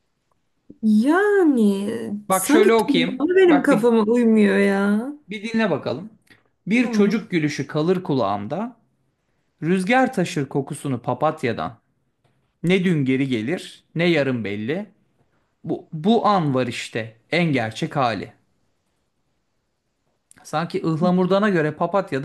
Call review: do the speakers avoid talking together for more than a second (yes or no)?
no